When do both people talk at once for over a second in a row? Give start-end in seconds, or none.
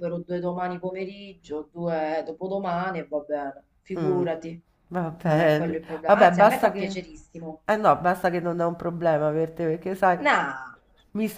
5.2-7.0